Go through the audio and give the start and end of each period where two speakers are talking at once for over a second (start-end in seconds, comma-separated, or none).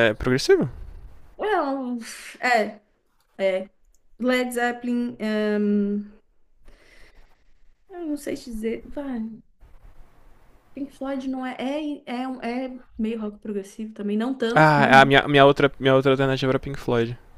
none